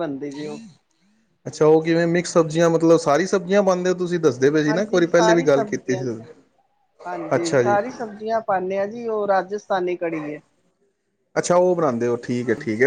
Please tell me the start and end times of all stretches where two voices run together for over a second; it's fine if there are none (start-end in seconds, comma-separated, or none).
4.7-6.0